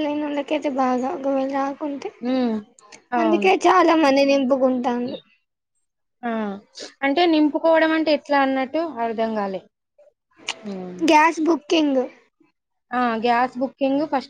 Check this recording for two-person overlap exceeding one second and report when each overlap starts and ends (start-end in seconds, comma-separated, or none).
none